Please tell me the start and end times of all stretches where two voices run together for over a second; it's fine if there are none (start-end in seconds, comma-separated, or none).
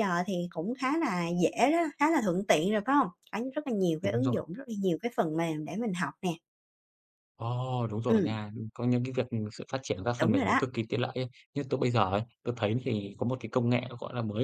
none